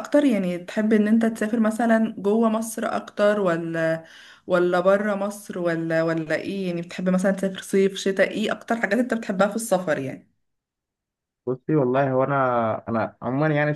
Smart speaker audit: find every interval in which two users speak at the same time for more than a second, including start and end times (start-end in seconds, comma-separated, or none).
none